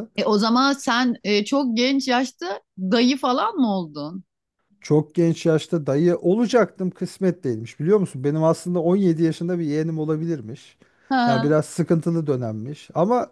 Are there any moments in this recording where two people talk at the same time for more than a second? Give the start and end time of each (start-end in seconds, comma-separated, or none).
none